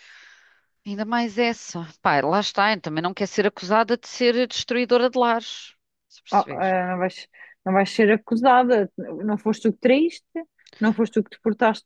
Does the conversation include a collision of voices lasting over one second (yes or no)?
no